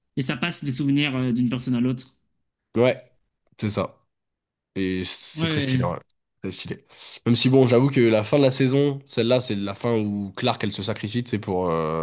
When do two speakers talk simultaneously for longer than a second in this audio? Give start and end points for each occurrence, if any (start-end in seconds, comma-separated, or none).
none